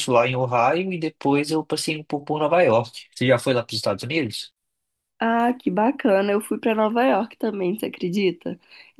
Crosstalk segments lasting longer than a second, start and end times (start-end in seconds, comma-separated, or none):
none